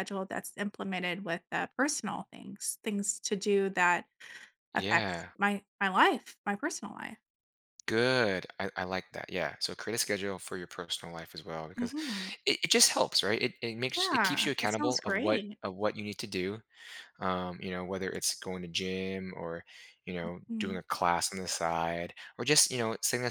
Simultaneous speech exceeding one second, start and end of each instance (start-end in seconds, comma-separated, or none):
13.9-15.6